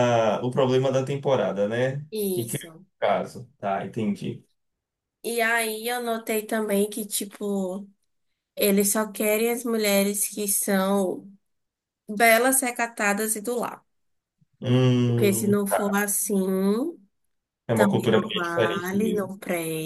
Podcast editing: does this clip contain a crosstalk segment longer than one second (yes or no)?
yes